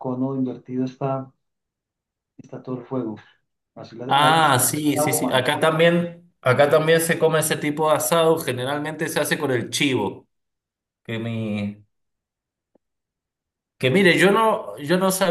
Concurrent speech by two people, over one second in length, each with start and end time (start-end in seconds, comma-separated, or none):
4.1-5.5